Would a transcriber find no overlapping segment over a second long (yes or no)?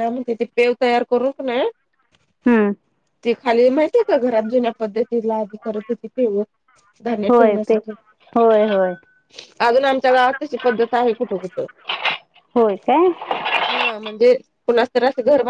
yes